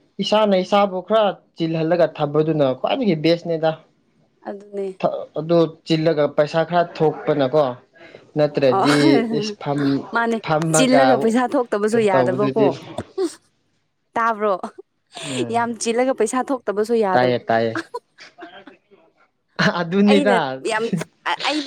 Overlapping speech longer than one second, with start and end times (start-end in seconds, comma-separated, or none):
none